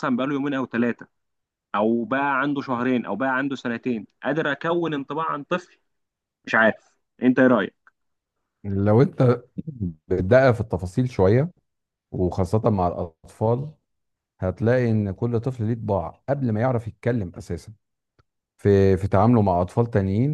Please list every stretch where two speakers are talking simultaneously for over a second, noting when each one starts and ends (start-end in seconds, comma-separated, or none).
none